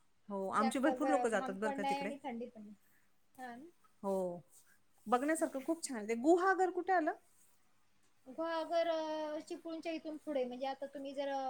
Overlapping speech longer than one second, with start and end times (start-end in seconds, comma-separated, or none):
0.6-2.1